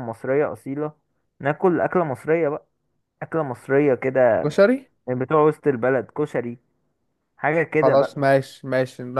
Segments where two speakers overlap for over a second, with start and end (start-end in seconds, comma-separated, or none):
none